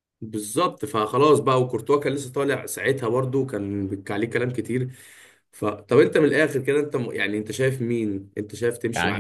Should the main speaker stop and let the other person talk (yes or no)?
yes